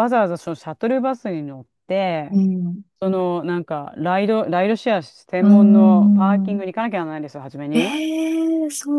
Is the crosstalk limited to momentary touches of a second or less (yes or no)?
no